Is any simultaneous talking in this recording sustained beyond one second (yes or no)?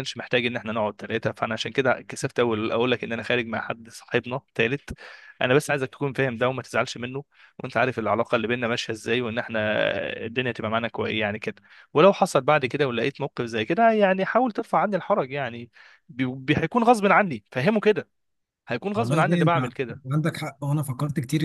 no